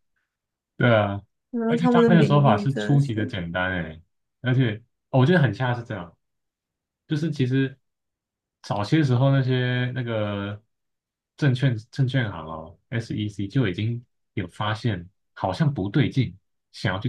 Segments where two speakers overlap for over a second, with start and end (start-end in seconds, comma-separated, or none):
1.7-3.3